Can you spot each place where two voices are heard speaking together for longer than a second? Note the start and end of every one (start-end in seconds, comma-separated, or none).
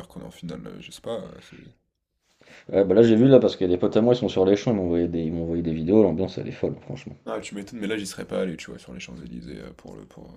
none